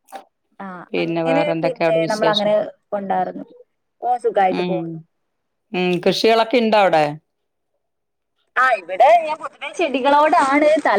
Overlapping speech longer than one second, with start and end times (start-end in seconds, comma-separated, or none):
0.9-2.5